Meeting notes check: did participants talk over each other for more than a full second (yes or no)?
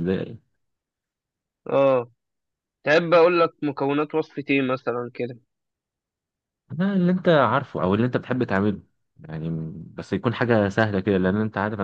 no